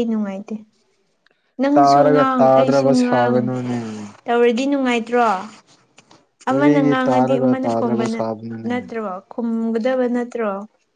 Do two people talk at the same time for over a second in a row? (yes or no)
yes